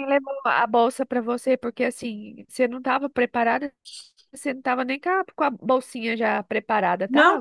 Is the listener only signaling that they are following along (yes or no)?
no